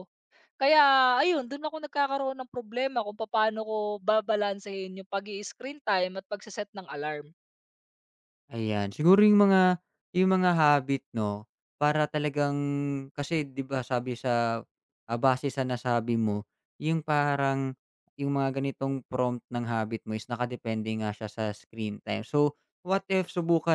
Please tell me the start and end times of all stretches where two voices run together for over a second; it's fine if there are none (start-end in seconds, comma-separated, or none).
none